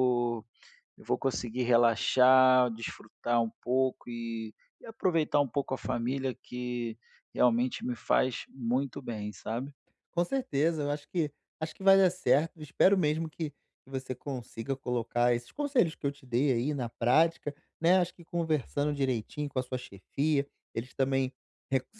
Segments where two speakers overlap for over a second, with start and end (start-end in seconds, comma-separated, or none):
none